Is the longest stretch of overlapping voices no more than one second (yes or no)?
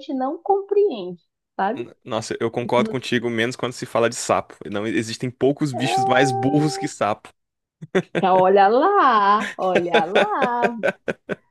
yes